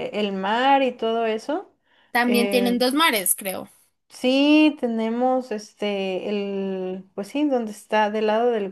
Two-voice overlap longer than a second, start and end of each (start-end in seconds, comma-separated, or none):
none